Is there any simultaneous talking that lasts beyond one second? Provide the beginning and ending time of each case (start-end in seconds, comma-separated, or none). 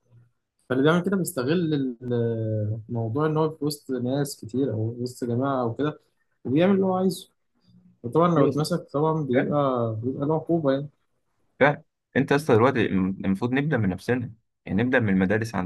none